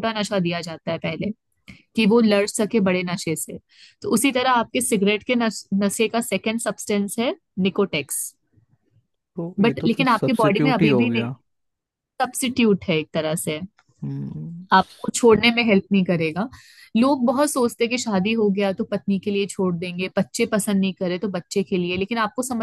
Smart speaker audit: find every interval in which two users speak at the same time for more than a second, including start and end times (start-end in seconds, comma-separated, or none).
9.6-11.3